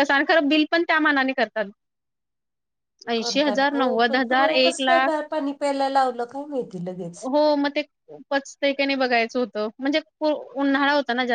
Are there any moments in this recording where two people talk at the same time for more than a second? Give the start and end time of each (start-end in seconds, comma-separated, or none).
3.2-5.2